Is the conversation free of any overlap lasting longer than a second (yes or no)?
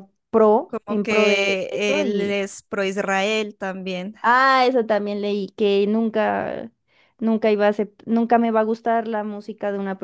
no